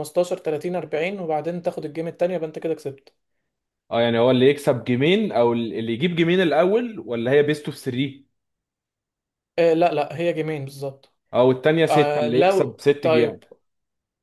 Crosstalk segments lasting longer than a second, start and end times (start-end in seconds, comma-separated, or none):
11.9-13.4